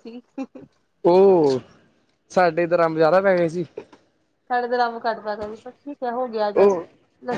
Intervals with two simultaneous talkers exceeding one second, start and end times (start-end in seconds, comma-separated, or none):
none